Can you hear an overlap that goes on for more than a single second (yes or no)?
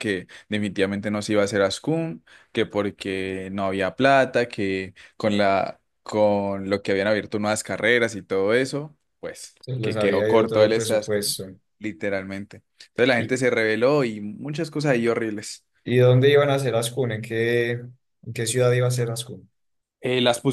yes